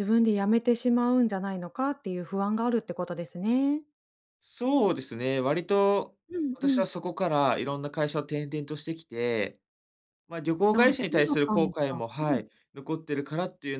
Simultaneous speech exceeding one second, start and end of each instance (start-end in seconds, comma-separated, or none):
10.7-12.4